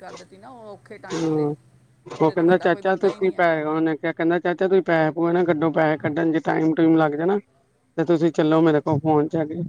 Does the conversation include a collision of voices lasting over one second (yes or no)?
yes